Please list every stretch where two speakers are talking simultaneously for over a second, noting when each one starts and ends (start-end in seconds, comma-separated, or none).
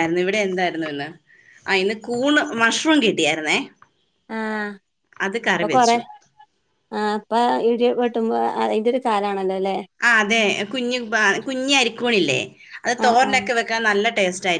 none